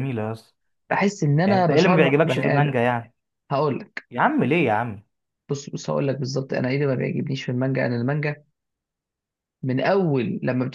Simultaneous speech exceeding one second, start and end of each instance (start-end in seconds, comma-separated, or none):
1.4-2.8